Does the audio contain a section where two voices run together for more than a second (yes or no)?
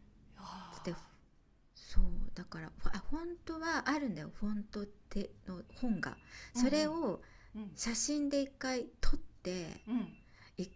no